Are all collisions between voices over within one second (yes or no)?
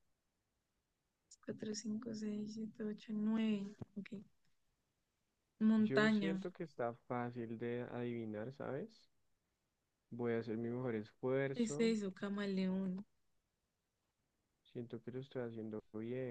yes